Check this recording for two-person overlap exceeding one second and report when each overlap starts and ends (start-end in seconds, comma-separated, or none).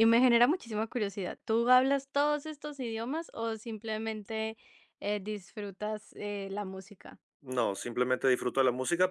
none